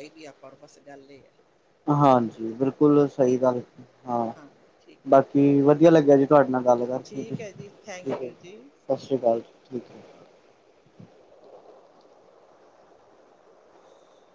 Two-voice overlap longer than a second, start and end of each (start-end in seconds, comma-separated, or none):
none